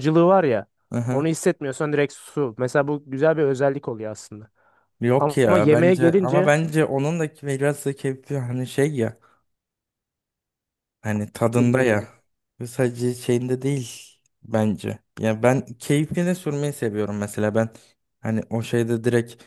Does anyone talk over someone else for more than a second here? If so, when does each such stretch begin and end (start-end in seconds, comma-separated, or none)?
5.2-6.5